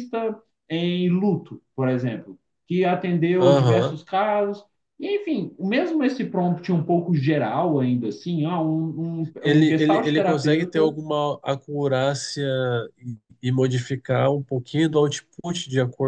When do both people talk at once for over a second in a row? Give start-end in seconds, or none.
9.4-11.0